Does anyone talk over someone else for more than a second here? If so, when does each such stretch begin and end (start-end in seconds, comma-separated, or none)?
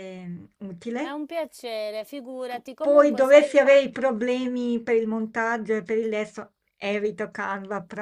2.5-3.9